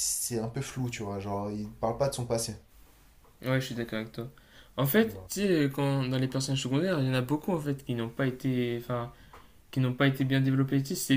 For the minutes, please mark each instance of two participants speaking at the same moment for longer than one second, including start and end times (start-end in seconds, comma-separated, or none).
none